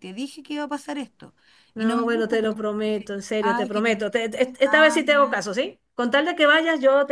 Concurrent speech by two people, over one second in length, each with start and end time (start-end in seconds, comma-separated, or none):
1.8-5.4